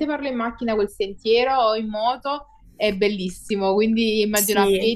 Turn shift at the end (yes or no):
no